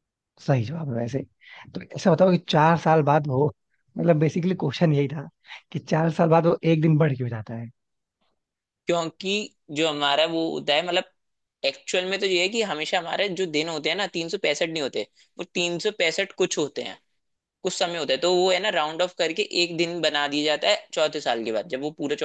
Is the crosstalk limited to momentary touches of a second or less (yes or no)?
yes